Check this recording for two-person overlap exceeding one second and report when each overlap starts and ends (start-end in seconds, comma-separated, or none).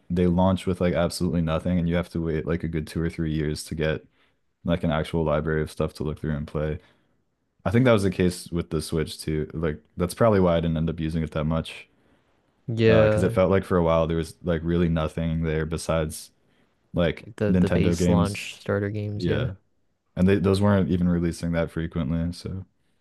17.2-18.5